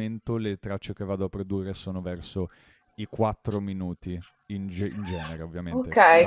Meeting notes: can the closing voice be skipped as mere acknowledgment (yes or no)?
no